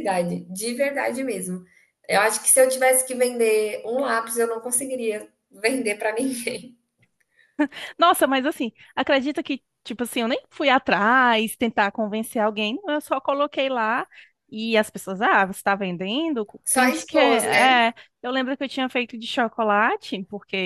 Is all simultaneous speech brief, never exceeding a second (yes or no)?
no